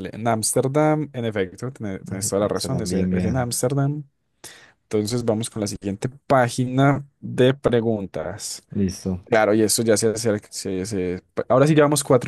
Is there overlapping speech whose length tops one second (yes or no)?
yes